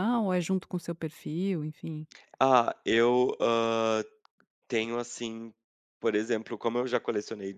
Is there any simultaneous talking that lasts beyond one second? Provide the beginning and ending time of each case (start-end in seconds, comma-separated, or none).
none